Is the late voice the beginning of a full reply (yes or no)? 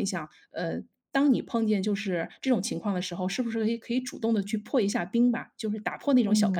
yes